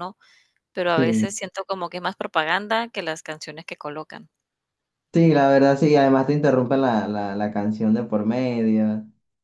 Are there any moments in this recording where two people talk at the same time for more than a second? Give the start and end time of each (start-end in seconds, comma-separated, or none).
none